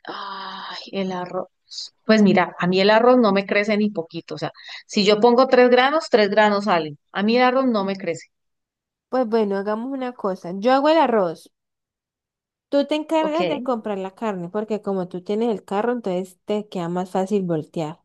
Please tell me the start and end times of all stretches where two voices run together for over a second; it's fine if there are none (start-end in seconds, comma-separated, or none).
none